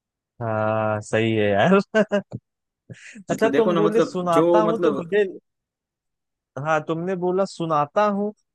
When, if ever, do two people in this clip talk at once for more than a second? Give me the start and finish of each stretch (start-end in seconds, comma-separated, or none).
3.3-5.0